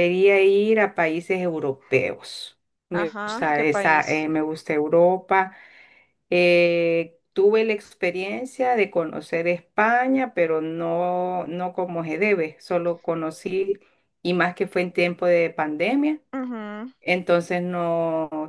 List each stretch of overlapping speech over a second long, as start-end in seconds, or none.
2.9-4.3